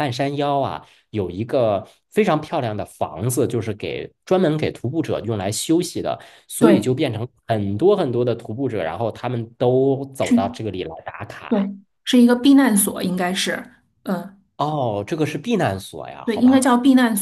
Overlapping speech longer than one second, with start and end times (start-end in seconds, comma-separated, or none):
none